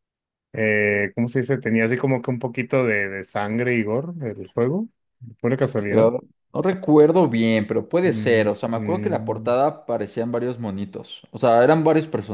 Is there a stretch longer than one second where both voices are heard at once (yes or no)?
yes